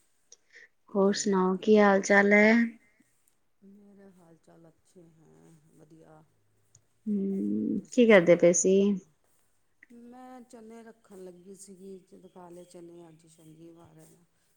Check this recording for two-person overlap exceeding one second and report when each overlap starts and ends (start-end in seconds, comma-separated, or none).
0.9-2.4